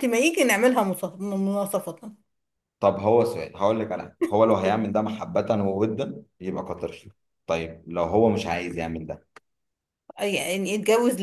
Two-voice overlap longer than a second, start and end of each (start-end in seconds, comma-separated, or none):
none